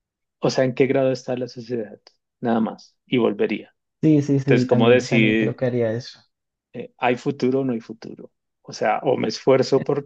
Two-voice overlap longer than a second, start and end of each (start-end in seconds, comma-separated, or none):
4.4-5.6